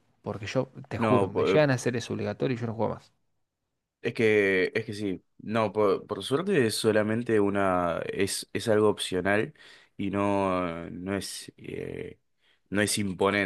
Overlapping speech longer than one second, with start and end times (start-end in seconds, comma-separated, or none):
none